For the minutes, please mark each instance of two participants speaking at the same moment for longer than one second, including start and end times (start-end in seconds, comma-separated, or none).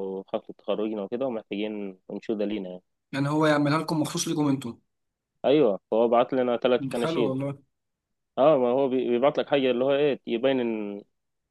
none